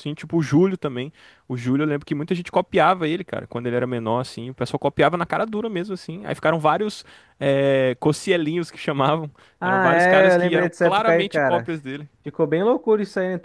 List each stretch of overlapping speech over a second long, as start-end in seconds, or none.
9.6-11.7